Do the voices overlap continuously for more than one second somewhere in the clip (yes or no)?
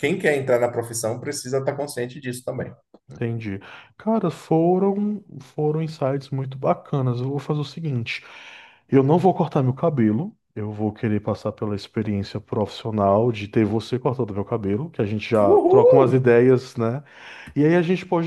no